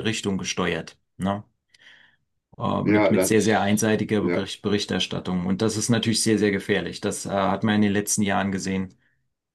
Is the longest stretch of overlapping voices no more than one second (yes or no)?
no